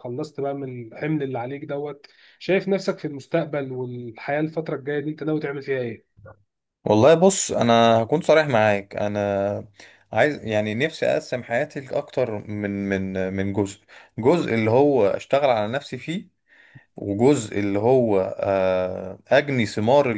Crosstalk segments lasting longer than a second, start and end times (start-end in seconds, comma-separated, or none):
none